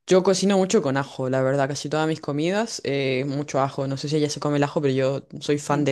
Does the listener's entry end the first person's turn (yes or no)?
no